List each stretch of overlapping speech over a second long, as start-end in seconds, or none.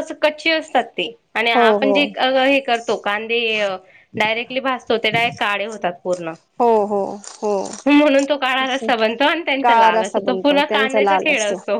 9.6-11.3